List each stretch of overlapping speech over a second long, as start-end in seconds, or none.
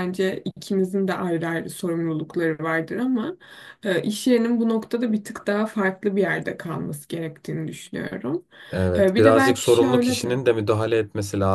9.0-10.4